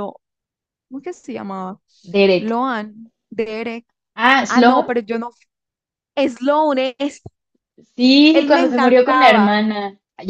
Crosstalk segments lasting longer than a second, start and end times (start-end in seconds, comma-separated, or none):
8.3-9.6